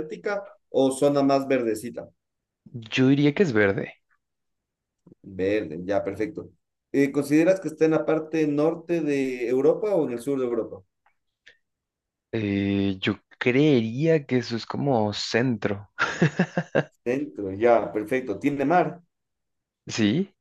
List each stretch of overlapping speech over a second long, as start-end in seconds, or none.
none